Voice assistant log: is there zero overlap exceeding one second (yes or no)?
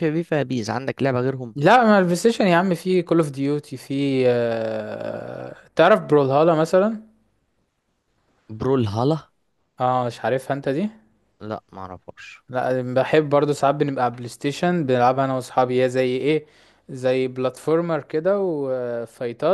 yes